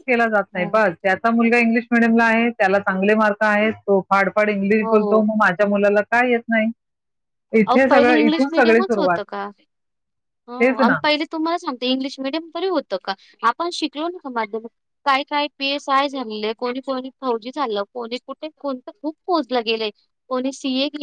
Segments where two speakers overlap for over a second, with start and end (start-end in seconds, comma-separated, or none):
7.7-9.2